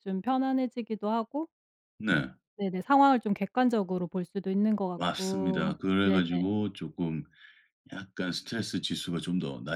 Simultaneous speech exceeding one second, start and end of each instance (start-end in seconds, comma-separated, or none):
4.9-6.2